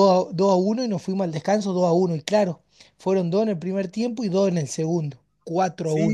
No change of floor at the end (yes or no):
no